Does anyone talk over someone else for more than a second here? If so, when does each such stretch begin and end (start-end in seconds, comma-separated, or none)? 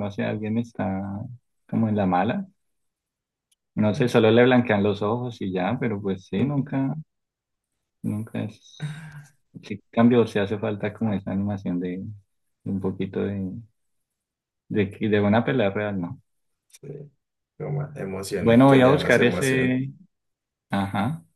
18.4-19.8